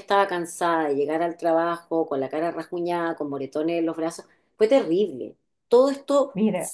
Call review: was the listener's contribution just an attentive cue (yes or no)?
yes